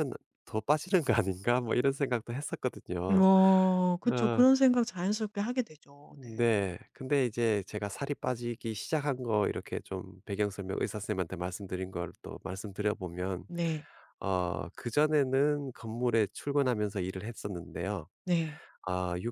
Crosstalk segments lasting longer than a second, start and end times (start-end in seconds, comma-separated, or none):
none